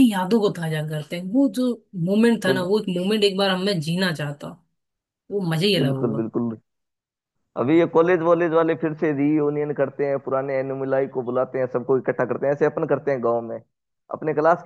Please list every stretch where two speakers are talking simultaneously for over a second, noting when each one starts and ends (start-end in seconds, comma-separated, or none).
none